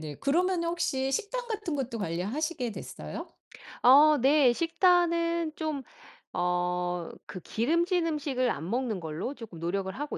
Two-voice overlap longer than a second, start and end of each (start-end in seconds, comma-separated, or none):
none